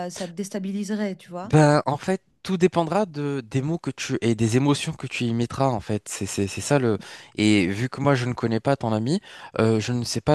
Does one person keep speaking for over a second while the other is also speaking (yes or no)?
no